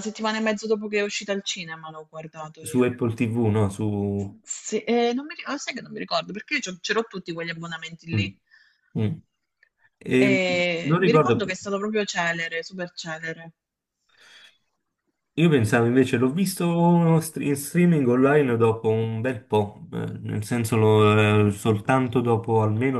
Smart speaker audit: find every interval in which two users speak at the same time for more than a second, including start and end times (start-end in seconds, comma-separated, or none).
none